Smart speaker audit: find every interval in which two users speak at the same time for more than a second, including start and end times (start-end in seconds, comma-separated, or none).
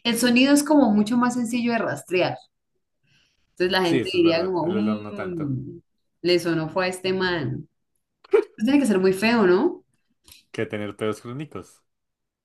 3.8-5.6